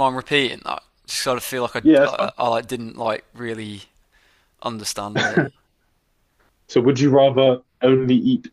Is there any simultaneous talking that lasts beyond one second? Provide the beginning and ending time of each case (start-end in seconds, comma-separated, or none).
none